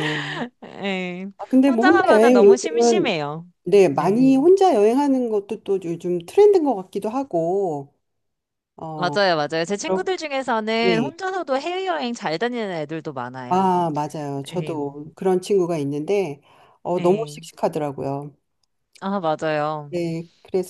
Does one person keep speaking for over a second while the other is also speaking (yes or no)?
yes